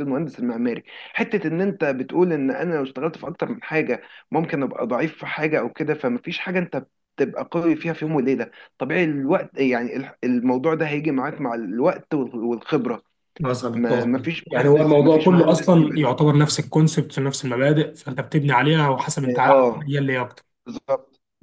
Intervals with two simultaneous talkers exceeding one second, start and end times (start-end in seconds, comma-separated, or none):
13.7-16.1